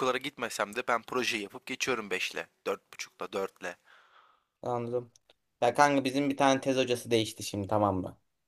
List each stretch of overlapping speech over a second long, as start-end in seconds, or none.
none